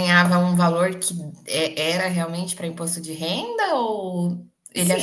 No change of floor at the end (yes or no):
no